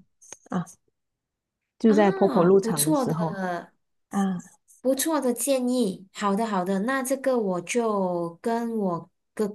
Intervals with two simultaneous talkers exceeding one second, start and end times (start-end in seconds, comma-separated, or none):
1.9-3.4